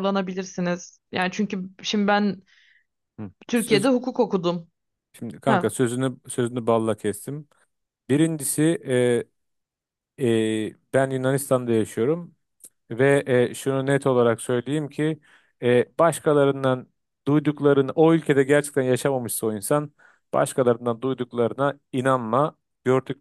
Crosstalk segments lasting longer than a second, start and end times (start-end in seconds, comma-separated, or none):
none